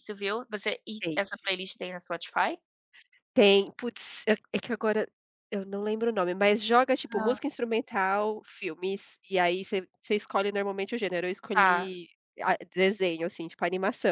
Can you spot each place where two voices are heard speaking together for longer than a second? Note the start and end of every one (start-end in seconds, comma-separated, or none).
none